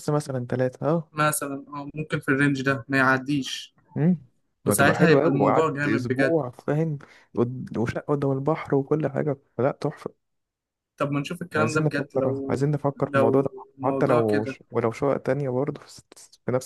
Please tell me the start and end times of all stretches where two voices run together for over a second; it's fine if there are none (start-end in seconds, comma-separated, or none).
4.7-6.3, 11.6-14.6